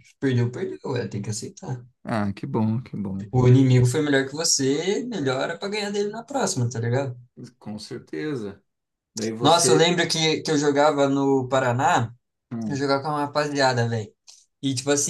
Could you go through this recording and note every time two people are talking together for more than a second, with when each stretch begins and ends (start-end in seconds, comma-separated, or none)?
none